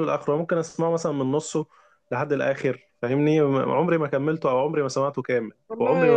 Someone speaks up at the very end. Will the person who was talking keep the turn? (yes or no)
no